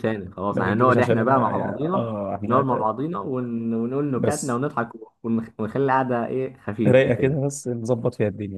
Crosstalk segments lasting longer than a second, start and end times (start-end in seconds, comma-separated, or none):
0.5-2.6